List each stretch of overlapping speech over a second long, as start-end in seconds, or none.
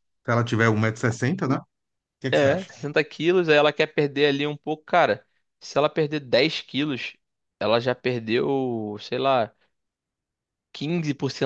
none